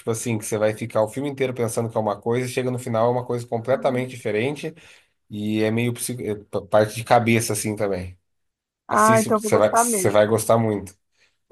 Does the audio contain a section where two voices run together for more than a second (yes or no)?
yes